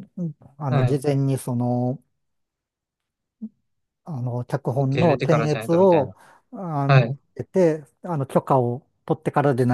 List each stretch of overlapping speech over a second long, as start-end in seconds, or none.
4.8-6.1